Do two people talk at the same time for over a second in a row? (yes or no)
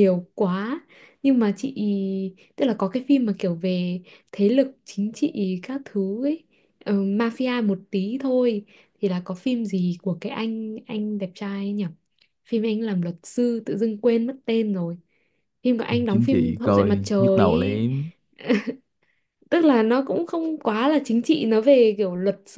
yes